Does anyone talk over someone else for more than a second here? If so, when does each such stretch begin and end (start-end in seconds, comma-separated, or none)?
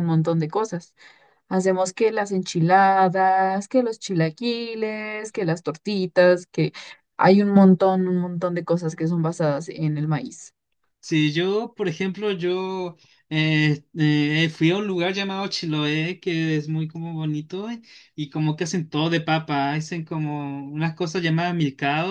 none